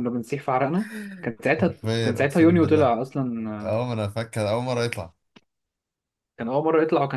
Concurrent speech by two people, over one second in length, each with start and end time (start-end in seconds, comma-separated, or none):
1.4-2.9